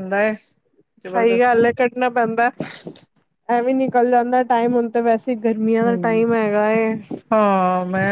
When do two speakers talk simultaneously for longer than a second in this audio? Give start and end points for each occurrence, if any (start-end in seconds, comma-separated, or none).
none